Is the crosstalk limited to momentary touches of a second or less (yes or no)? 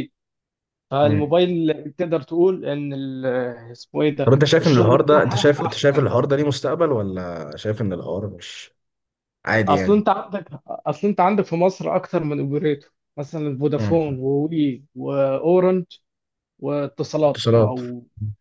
no